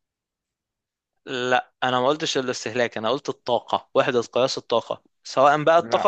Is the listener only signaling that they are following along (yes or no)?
yes